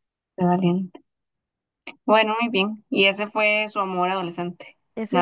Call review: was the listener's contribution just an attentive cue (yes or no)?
no